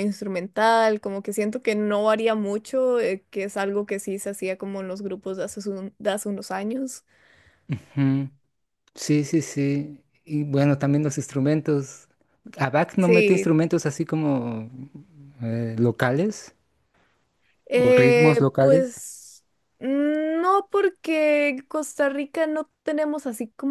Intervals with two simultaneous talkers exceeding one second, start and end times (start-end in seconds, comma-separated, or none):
17.8-19.0